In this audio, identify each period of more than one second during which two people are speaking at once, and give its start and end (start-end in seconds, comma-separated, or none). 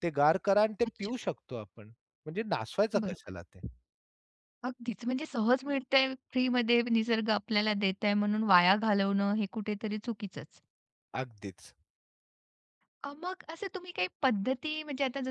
none